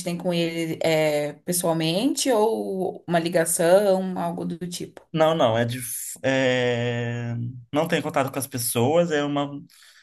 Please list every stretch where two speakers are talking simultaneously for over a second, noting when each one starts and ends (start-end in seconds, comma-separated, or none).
none